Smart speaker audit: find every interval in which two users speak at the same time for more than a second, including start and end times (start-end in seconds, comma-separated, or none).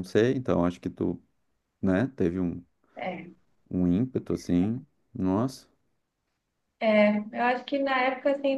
none